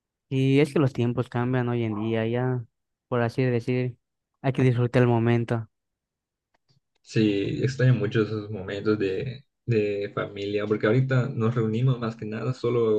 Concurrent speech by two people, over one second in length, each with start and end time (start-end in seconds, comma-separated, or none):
none